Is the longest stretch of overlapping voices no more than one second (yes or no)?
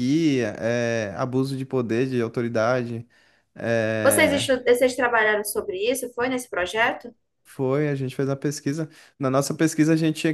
yes